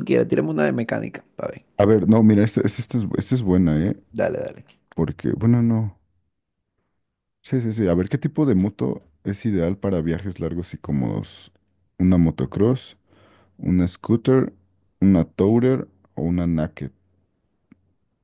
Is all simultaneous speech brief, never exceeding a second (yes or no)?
yes